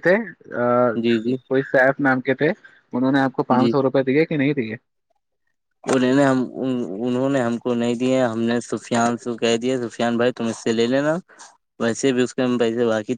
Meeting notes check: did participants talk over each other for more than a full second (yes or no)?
no